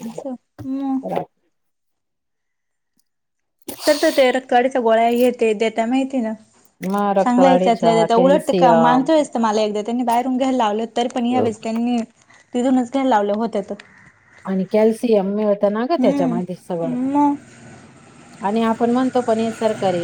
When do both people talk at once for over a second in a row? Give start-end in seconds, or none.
7.2-9.1